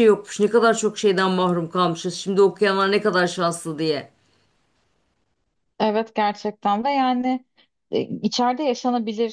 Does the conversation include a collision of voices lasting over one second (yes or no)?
no